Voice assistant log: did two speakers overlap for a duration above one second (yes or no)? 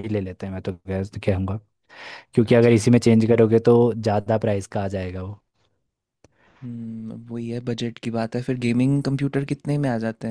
no